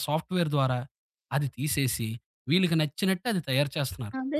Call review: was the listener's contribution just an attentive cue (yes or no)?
no